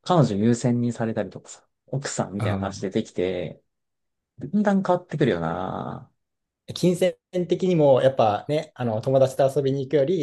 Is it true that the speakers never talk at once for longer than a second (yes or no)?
yes